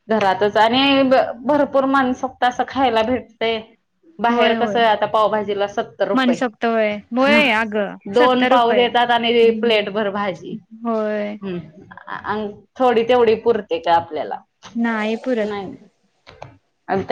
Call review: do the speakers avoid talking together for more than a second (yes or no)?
no